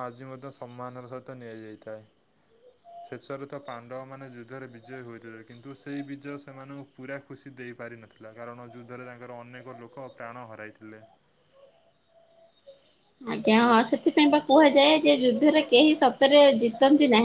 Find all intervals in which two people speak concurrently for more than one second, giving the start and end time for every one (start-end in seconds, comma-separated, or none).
none